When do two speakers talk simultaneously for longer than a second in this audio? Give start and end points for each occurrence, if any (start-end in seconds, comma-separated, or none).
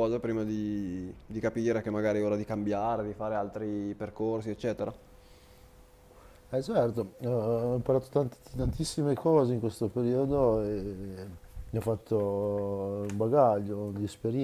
none